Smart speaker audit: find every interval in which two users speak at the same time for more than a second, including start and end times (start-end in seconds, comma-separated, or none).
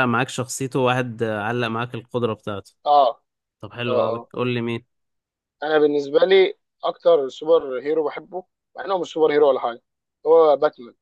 none